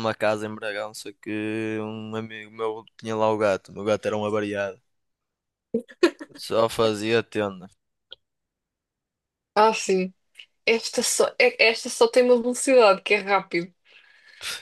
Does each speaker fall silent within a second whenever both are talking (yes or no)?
yes